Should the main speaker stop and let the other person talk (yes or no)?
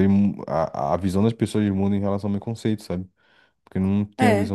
yes